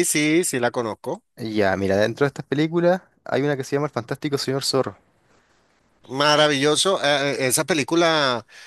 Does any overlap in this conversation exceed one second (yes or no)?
no